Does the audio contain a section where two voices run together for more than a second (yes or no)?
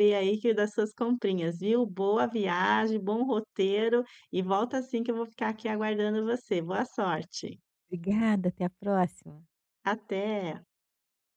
no